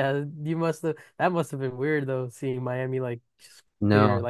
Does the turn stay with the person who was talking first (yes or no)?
no